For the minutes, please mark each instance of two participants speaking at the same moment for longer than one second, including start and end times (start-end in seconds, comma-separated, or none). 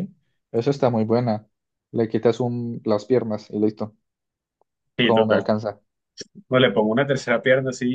none